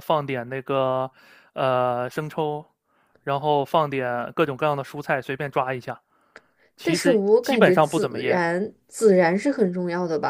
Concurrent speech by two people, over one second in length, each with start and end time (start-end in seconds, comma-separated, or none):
6.8-8.4